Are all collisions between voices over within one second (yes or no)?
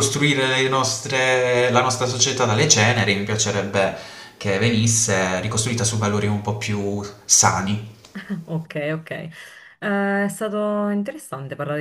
yes